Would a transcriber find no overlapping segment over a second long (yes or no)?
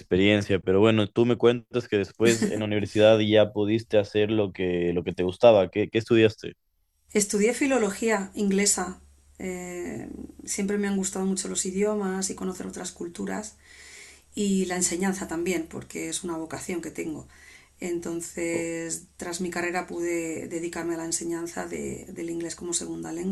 yes